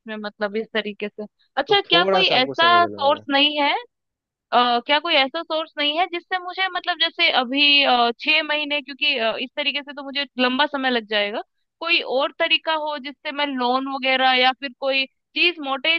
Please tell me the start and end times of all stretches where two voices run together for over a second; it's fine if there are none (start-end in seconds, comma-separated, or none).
1.7-3.2